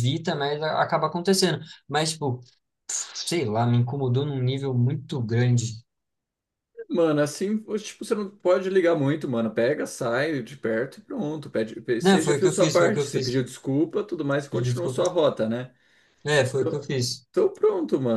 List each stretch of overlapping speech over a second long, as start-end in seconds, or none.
12.0-13.4